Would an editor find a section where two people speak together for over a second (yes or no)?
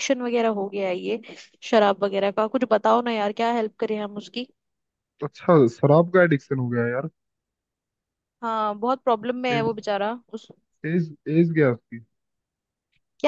no